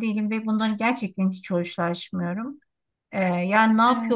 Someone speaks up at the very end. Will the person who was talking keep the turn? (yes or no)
yes